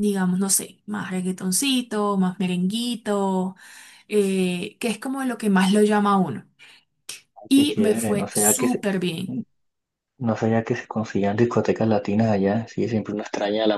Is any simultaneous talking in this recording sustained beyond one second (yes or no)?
yes